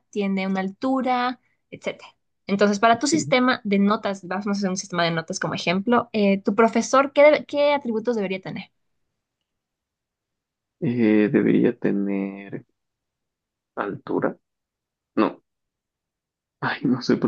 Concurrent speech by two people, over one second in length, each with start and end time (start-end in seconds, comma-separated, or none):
none